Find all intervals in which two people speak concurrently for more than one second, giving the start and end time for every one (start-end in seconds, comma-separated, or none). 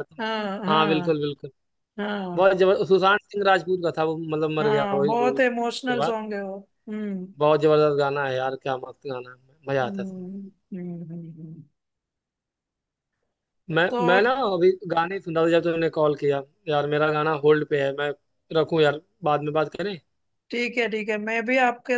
4.6-6.1